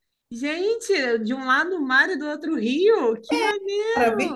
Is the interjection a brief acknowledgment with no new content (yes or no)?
no